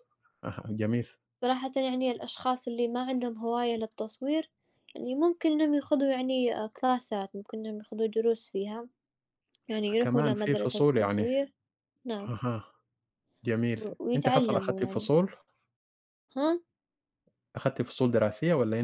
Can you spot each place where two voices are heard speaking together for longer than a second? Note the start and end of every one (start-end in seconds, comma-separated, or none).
10.0-11.3, 13.8-15.1